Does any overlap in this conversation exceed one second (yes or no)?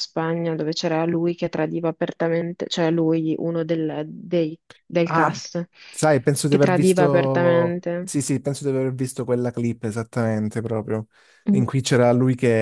yes